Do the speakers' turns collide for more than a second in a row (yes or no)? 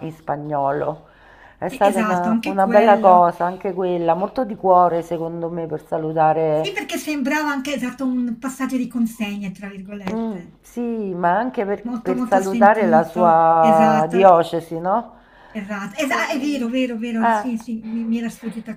yes